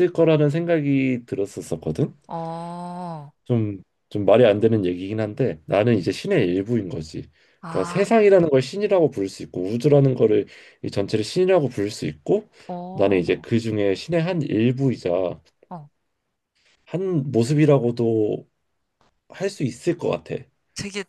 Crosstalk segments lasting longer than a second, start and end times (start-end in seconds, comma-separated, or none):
none